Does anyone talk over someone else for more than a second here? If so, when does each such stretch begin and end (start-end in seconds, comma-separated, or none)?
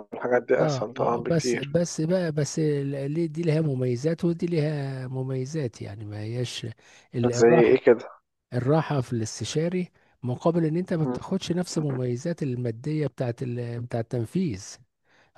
0.6-1.8